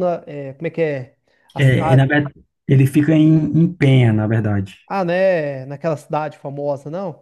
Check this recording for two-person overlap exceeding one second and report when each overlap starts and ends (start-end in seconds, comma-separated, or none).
none